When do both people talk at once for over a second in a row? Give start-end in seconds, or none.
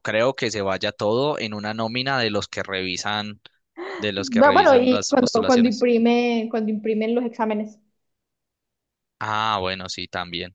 4.4-5.9